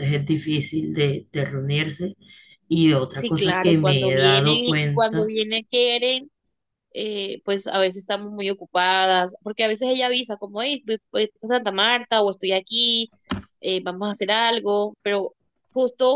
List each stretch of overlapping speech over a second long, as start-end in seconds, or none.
3.1-5.3